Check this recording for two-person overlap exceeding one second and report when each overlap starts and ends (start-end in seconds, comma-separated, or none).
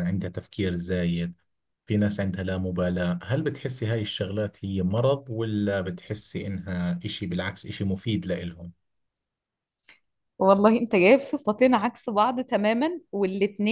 none